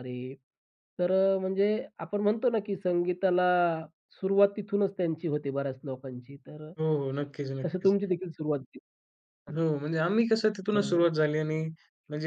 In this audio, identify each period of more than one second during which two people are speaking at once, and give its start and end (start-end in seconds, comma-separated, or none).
none